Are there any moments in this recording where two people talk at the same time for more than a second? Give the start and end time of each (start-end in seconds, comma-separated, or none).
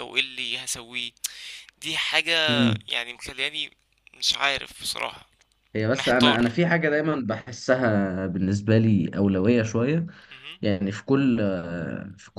none